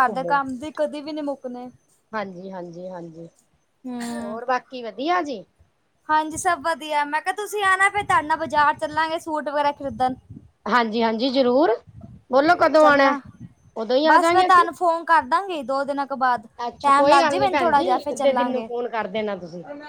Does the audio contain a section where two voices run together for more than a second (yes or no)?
yes